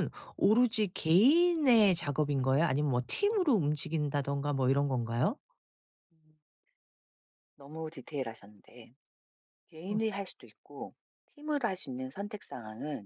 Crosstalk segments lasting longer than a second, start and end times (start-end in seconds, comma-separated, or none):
none